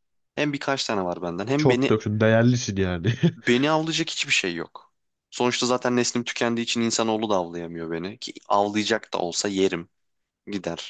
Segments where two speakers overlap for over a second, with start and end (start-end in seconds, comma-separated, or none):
none